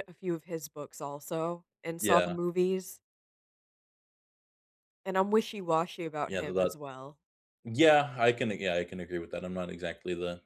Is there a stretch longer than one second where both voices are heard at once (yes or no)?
no